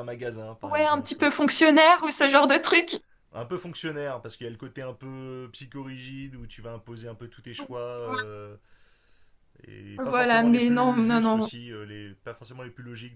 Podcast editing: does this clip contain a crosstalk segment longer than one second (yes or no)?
yes